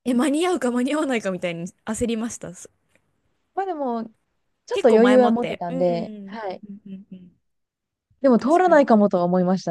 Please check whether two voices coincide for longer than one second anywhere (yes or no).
yes